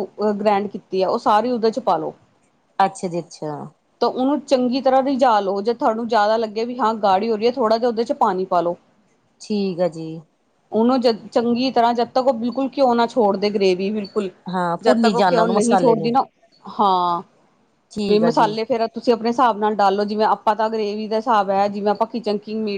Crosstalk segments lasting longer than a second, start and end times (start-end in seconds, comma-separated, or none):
14.8-16.1